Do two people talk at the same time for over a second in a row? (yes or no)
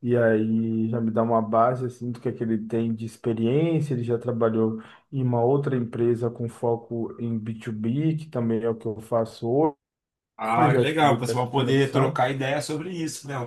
yes